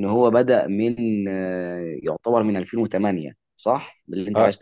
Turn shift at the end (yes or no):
yes